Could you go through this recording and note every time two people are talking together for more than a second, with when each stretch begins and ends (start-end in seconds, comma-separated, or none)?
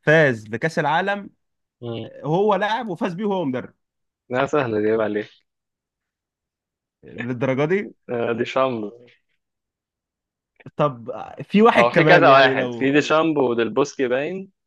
11.8-13.0